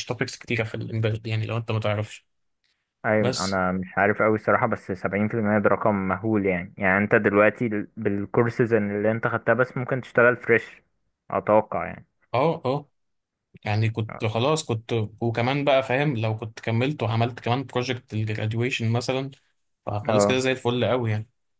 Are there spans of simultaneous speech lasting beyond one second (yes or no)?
no